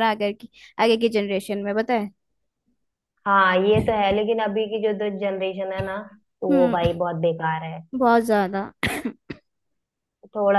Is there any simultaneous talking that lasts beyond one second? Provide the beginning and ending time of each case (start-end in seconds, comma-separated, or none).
none